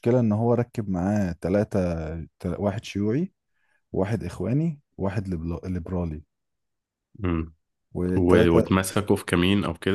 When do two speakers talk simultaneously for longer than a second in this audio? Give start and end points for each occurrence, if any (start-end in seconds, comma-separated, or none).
none